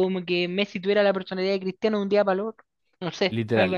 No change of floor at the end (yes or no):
no